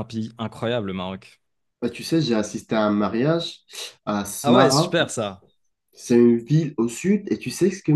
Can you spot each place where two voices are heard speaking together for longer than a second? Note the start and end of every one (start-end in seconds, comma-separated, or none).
none